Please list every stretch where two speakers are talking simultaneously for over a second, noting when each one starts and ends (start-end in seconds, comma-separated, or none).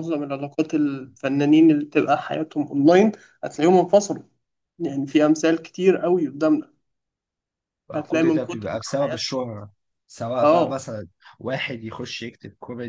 7.9-9.3